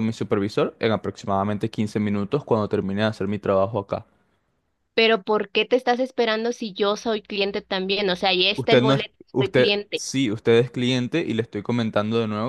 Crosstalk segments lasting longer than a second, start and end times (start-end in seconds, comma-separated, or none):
8.5-10.0